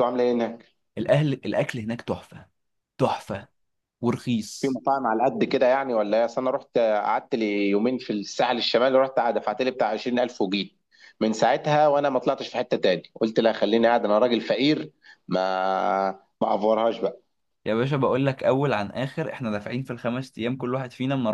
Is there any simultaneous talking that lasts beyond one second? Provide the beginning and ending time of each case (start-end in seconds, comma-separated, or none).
none